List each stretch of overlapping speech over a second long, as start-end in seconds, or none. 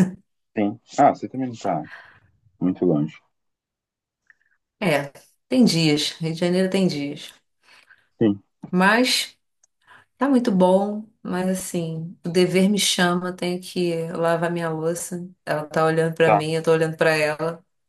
none